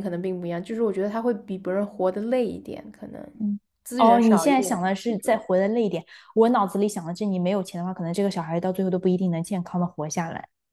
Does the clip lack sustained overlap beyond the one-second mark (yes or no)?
no